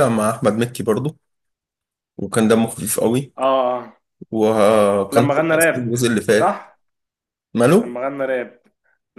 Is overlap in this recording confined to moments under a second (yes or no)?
no